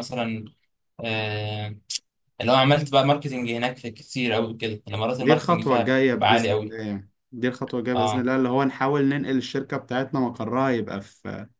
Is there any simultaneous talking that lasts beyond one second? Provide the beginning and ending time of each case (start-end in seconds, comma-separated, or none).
5.2-6.7